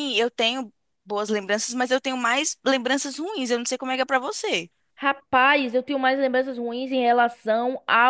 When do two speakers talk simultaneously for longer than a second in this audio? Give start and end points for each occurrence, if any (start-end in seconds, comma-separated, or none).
none